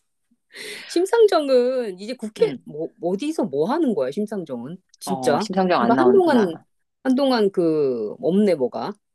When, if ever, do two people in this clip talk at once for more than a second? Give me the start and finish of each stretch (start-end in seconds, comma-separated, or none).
5.0-6.6